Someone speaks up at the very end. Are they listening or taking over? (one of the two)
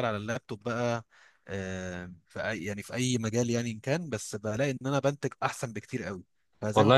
taking over